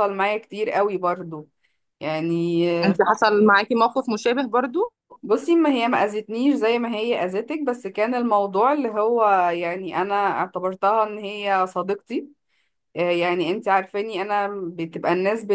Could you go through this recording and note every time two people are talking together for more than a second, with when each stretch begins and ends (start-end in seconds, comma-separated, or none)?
none